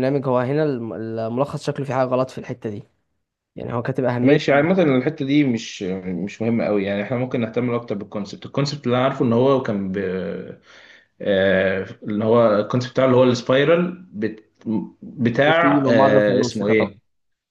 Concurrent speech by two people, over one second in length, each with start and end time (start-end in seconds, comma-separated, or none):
15.4-16.9